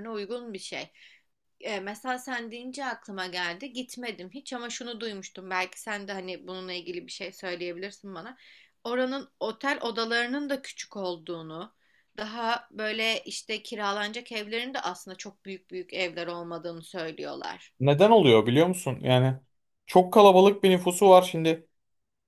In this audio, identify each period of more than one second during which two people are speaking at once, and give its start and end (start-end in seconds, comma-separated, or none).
none